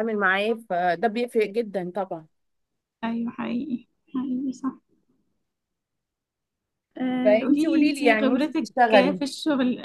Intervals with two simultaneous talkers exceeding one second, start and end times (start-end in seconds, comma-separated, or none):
7.2-9.2